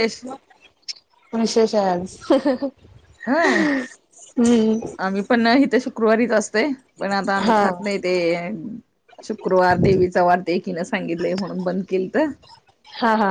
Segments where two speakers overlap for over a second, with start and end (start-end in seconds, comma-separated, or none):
none